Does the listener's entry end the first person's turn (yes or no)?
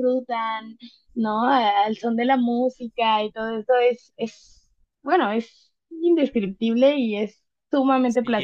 yes